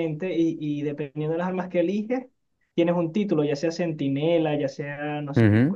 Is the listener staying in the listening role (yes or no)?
yes